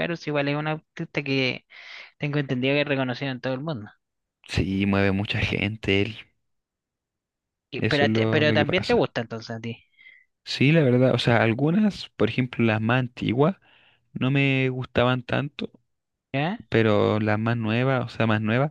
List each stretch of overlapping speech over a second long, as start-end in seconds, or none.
7.7-9.1